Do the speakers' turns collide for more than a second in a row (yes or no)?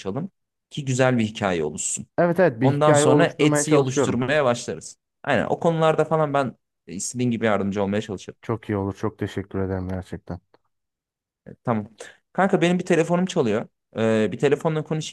yes